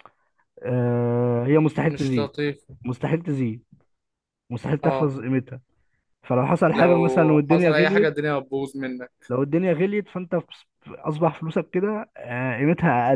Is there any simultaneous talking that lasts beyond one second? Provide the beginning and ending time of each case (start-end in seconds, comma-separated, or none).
6.7-8.2